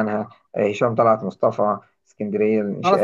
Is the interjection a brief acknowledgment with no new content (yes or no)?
no